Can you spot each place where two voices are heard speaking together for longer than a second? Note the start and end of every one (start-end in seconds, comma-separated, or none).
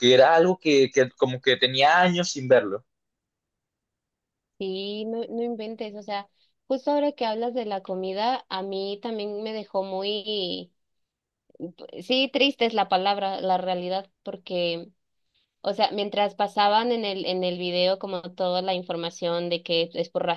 none